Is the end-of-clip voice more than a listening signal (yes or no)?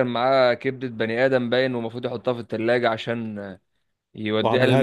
no